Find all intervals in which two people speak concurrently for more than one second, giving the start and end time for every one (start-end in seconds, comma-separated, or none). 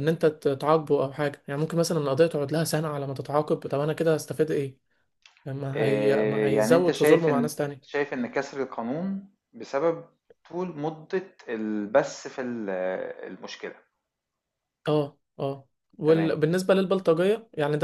5.7-8.0